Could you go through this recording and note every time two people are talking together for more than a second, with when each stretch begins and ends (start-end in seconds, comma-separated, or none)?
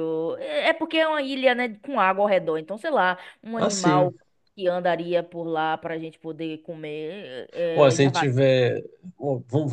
none